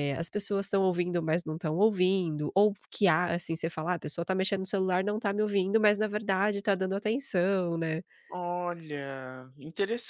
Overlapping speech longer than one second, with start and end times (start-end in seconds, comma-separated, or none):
none